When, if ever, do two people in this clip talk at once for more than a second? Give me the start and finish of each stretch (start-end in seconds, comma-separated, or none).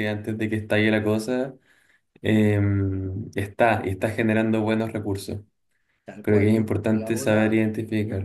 6.2-7.6